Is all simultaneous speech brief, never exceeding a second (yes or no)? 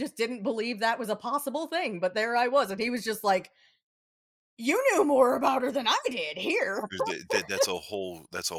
yes